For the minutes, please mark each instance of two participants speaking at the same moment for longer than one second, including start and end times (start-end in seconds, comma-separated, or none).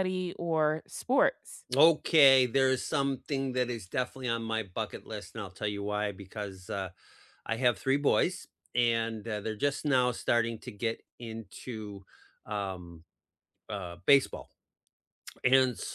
none